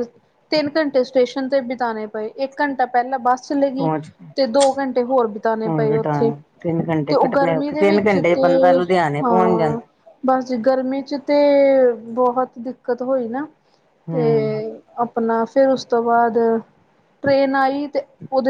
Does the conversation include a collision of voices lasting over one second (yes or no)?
yes